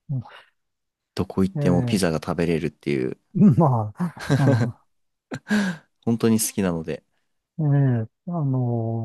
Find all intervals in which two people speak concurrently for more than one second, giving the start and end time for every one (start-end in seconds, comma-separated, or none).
none